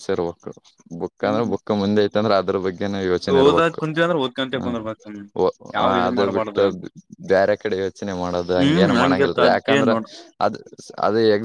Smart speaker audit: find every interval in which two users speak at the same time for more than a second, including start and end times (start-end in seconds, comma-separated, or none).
8.6-9.9